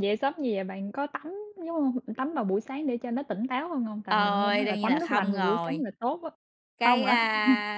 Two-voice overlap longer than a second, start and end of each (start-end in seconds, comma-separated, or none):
4.1-5.8